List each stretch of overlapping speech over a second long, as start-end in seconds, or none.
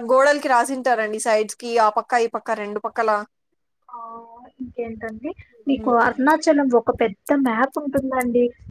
none